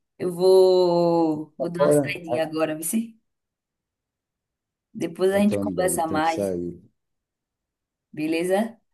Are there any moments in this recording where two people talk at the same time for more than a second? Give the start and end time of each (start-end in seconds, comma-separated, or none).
5.3-6.6